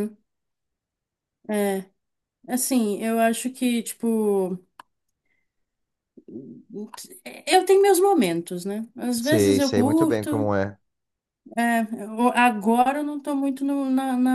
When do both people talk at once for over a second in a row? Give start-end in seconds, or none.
9.2-10.5